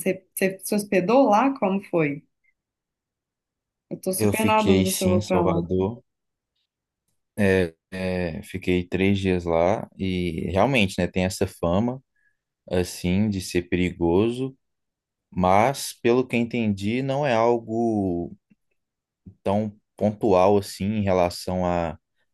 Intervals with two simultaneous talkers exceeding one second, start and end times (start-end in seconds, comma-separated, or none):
4.2-5.6